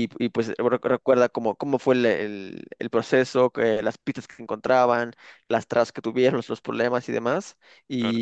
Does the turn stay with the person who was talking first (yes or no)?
yes